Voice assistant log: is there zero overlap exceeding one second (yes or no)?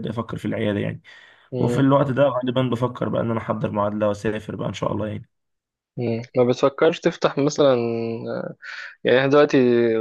yes